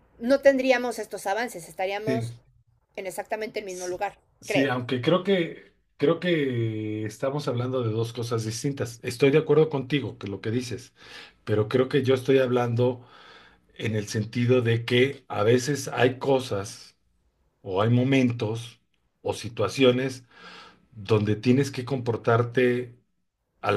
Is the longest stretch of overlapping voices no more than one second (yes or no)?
yes